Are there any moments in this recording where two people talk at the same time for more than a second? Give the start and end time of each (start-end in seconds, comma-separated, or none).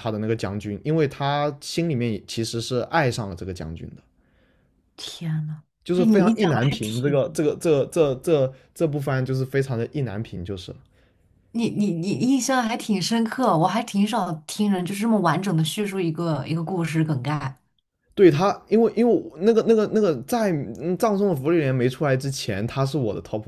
5.8-7.4